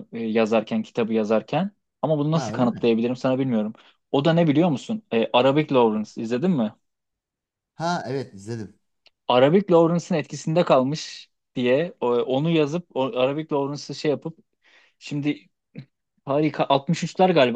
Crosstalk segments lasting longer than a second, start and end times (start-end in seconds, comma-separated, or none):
none